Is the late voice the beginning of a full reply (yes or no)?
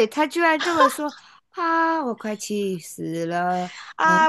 yes